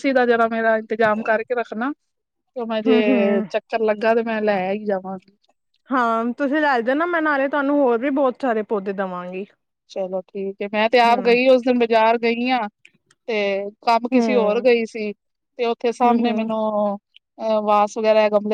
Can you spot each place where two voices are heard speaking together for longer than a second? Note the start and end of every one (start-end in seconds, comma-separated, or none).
none